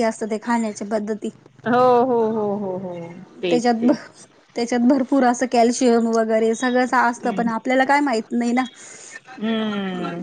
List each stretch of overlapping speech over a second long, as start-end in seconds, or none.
none